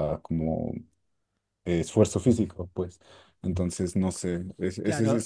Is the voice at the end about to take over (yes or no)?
no